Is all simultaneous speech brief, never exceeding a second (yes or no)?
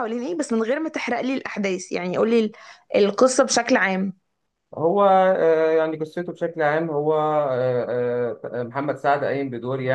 yes